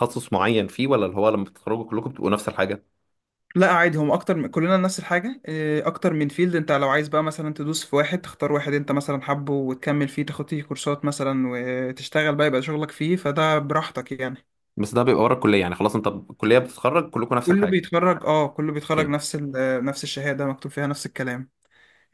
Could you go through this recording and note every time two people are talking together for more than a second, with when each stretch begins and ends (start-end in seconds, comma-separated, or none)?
none